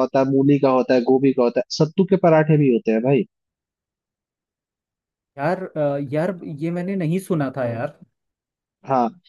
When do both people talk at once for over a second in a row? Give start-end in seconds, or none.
none